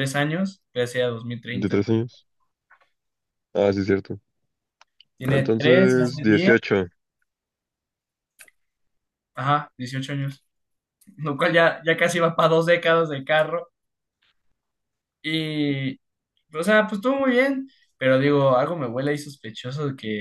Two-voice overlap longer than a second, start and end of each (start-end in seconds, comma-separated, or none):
5.2-6.5